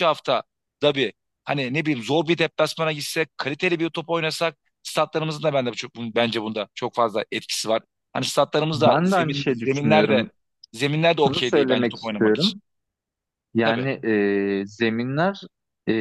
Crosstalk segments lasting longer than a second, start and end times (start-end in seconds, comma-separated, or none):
8.7-10.3, 11.2-12.6